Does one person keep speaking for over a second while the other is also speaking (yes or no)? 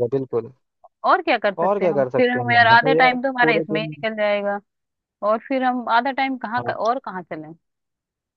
yes